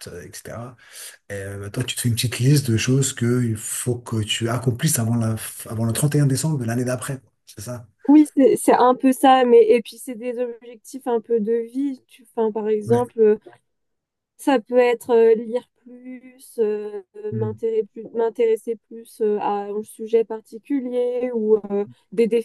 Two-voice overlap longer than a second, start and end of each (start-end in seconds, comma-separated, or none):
none